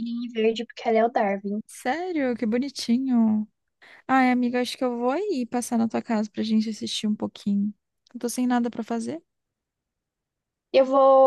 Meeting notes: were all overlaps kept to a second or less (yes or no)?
yes